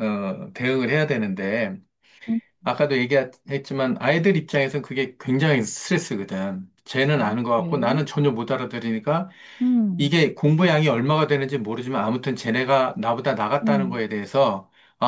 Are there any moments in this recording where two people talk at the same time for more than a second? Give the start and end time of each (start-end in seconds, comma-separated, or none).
none